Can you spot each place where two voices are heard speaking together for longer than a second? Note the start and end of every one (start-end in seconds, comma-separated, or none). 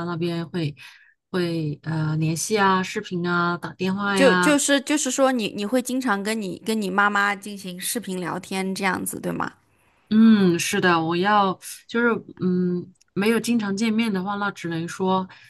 none